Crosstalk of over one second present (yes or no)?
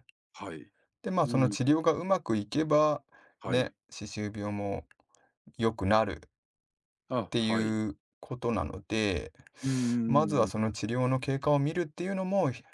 no